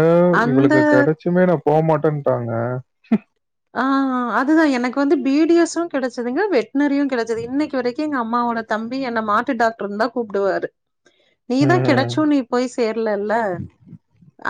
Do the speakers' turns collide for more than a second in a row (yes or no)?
no